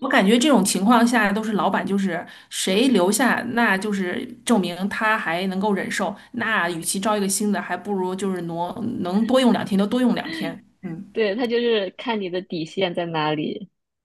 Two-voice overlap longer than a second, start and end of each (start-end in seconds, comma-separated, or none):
none